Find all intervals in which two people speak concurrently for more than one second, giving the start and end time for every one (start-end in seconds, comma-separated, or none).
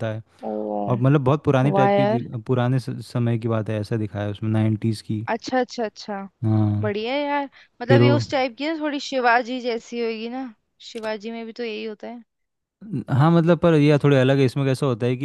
none